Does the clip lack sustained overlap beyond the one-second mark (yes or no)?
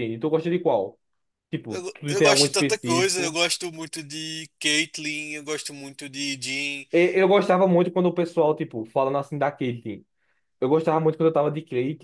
no